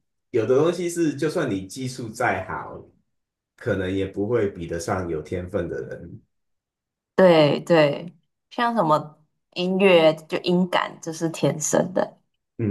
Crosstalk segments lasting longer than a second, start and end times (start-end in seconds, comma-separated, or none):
none